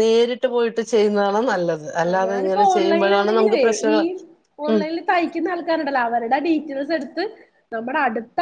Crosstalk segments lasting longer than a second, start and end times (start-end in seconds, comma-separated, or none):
2.3-4.0